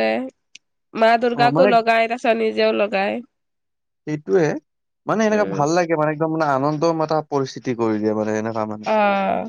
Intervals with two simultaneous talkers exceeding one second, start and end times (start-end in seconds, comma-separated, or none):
none